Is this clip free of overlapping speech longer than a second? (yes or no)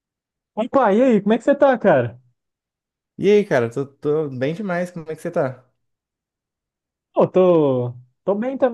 yes